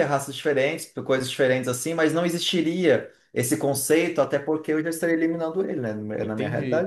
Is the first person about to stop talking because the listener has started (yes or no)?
yes